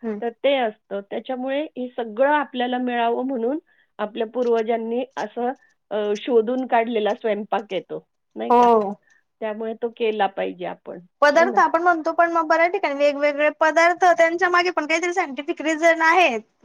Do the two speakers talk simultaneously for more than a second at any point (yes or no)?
no